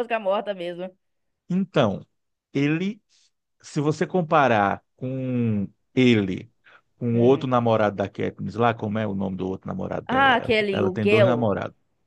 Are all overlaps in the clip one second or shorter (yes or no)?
no